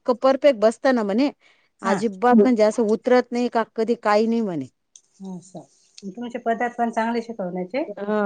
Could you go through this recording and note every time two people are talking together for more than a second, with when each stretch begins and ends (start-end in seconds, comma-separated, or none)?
none